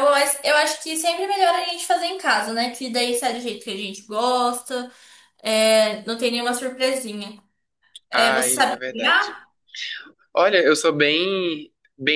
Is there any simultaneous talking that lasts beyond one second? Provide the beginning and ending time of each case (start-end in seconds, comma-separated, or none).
8.1-9.4